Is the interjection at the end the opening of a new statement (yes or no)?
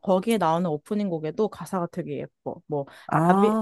no